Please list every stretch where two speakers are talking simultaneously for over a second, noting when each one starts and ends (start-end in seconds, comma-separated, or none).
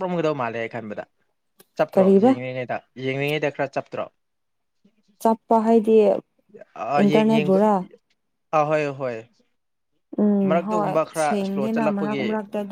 10.5-12.2